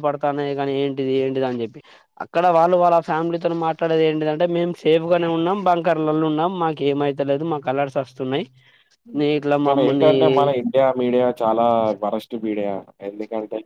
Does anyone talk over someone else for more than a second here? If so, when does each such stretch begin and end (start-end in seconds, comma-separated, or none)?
none